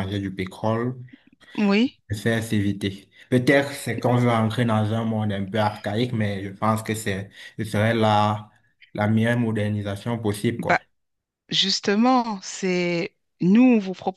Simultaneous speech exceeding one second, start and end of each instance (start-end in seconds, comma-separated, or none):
none